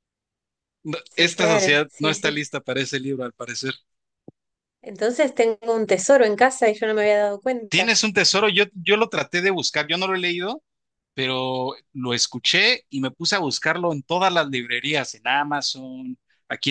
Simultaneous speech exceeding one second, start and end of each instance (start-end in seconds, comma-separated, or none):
1.0-2.4